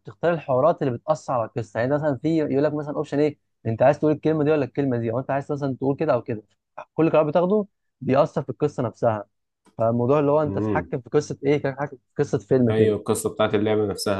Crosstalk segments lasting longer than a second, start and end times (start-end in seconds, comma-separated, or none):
none